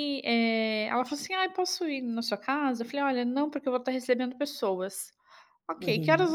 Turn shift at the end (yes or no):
no